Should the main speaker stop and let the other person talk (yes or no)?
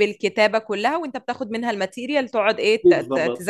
yes